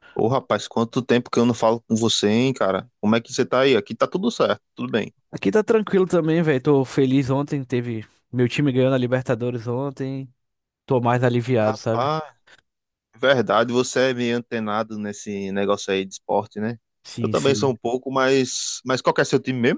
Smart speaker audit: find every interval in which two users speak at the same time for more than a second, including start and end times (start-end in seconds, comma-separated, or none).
none